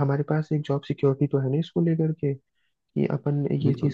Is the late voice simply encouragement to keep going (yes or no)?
no